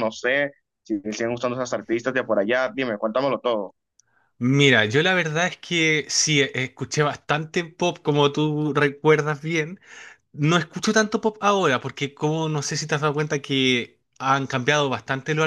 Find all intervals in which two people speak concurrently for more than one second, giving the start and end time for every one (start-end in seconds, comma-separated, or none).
none